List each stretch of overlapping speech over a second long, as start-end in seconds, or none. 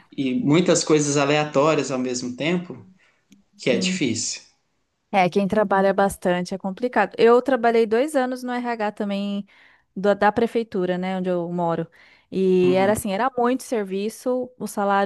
none